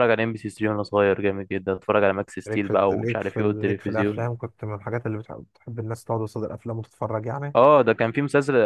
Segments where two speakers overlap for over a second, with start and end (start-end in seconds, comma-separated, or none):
2.5-4.3